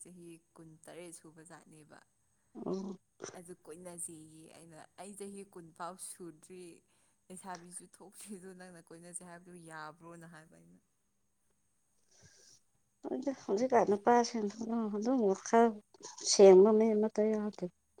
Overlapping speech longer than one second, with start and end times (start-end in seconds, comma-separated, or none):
none